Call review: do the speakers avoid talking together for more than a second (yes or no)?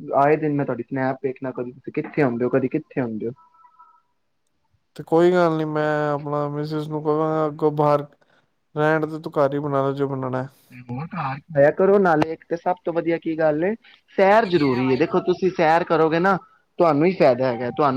yes